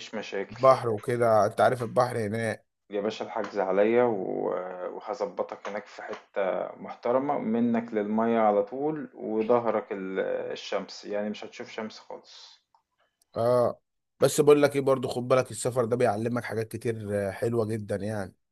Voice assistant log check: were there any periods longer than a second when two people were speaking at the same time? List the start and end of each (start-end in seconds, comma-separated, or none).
none